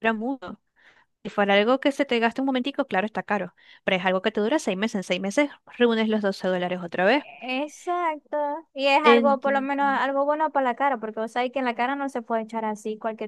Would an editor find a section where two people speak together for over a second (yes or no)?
no